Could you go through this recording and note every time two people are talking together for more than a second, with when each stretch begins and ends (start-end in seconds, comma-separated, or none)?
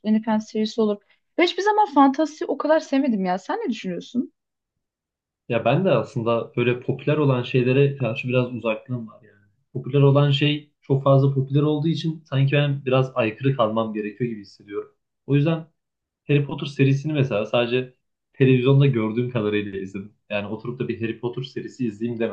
none